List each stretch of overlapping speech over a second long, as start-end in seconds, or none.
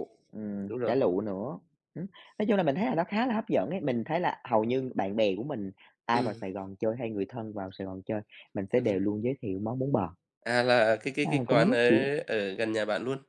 none